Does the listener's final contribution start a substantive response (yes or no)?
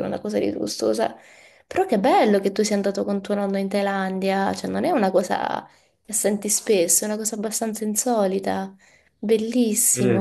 yes